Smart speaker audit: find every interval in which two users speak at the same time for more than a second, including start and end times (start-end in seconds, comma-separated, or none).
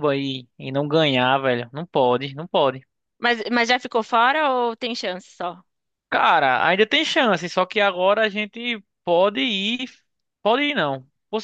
none